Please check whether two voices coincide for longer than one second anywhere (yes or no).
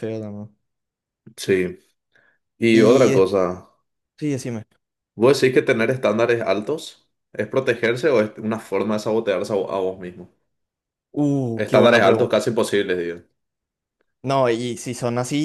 no